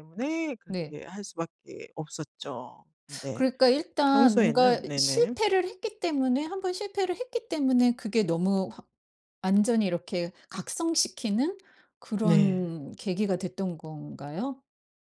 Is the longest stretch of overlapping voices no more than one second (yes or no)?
no